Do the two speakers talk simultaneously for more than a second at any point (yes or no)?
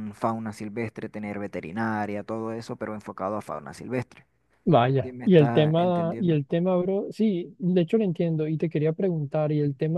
yes